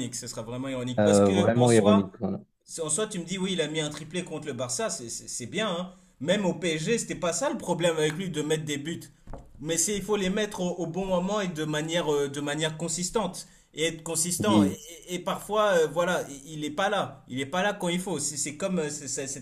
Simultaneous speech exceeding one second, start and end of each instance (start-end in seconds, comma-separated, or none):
1.0-2.2